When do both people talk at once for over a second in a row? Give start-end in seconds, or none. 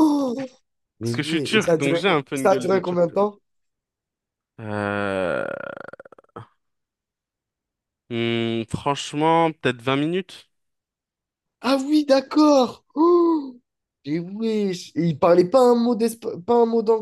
1.0-3.3